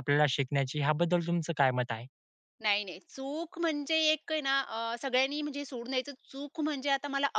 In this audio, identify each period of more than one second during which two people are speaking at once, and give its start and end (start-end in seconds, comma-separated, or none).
none